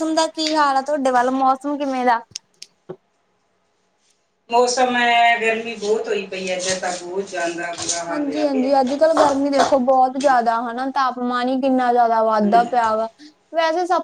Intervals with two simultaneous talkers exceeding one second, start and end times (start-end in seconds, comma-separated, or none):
none